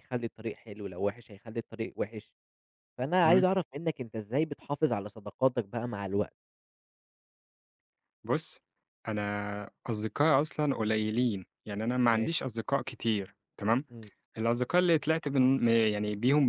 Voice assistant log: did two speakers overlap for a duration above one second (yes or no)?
no